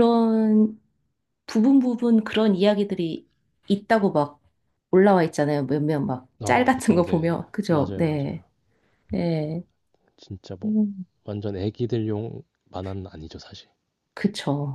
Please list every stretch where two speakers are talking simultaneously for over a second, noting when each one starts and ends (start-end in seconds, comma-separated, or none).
6.4-8.4